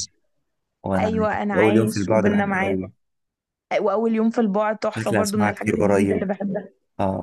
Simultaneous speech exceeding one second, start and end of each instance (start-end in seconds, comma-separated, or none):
1.0-2.8, 4.9-6.3